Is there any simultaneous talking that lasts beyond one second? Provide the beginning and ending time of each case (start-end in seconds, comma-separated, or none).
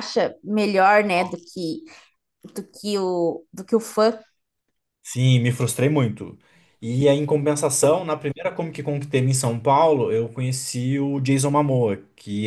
none